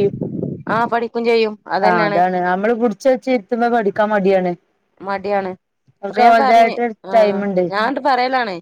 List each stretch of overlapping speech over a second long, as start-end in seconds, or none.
none